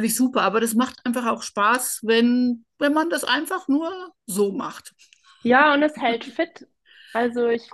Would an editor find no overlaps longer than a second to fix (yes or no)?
yes